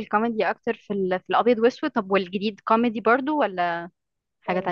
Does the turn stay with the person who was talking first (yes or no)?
no